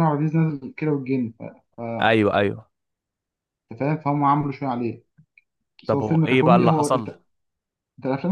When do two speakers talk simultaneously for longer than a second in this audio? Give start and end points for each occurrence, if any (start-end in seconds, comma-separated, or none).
5.9-7.1